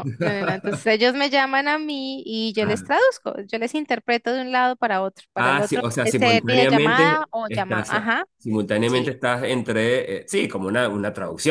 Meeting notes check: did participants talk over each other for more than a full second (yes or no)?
yes